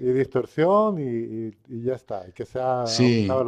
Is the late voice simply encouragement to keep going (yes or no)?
no